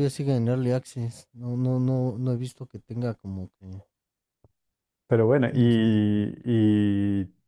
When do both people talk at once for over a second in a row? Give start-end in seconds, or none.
none